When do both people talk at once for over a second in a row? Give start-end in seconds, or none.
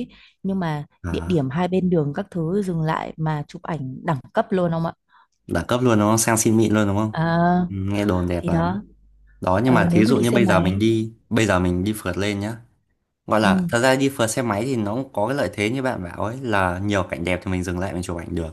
9.6-10.8